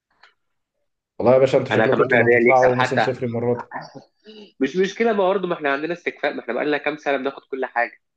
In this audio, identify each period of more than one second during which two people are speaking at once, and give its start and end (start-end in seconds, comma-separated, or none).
1.7-3.1